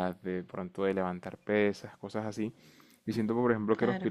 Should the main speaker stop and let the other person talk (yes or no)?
no